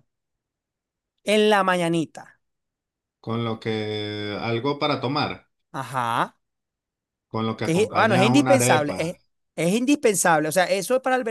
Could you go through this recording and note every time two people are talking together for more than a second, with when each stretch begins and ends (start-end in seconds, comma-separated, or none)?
7.6-9.1